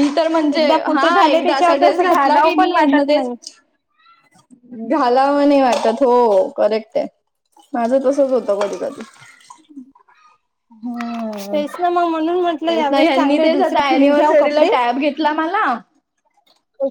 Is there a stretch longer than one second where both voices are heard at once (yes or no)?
yes